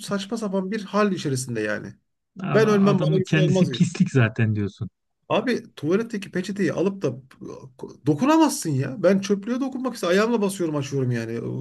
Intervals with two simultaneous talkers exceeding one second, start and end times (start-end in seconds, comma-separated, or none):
2.5-3.8